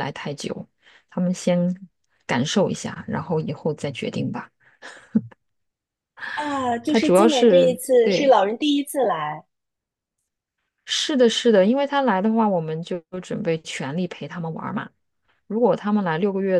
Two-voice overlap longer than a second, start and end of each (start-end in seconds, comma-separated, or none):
6.9-8.4